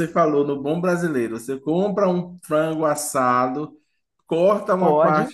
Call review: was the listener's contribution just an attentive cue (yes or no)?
yes